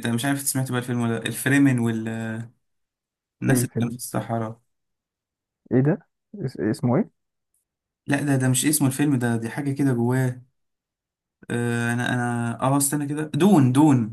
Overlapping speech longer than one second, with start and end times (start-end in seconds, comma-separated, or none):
none